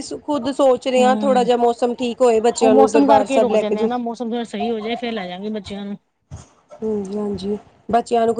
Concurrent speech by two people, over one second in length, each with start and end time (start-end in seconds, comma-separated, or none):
2.6-3.9